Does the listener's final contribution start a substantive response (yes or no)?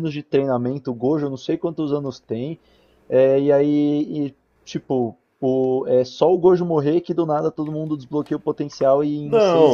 yes